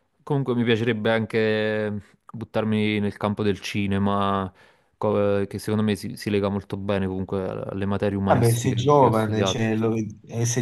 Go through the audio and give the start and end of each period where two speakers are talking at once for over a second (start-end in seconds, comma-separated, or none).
8.2-9.6